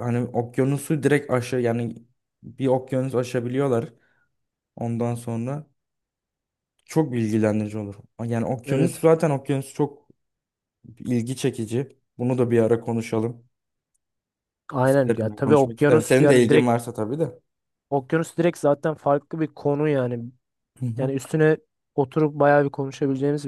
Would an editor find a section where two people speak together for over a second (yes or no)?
yes